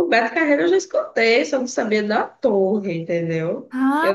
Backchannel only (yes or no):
no